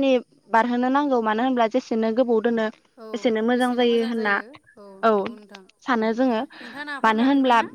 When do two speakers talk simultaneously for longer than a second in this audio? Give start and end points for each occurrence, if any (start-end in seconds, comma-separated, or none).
none